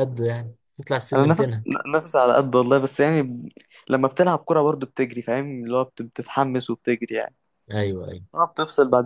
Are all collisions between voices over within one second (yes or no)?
yes